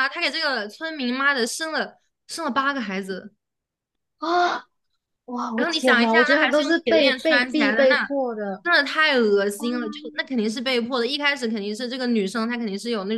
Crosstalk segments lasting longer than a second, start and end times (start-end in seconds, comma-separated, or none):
5.5-8.1